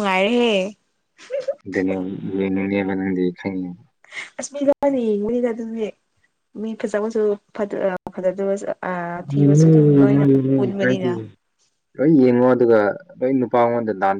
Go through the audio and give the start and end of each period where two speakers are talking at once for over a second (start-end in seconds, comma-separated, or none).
9.3-11.1